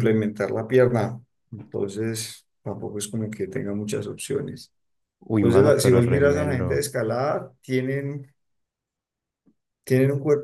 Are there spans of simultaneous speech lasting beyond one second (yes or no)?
yes